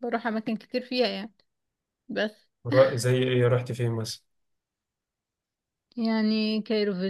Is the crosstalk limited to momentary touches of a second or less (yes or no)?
yes